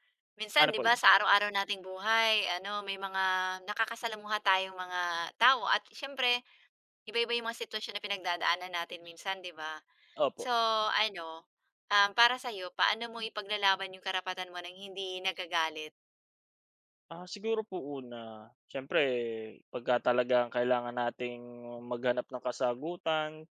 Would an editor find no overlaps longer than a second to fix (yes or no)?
yes